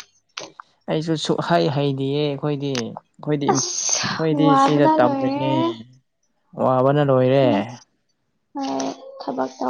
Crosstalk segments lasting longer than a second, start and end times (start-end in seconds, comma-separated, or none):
3.5-5.5